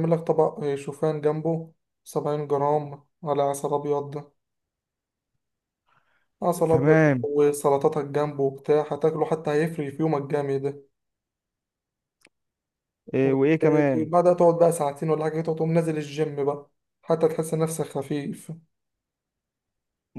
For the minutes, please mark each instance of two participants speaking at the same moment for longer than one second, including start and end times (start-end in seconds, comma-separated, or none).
none